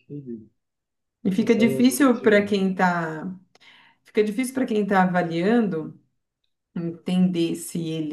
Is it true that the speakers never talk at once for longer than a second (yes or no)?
no